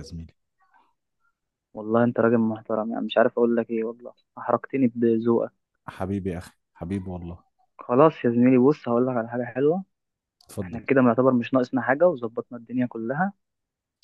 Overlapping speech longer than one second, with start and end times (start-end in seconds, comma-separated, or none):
none